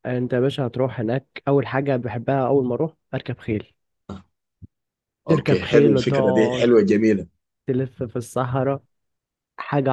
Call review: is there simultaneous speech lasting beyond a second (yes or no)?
yes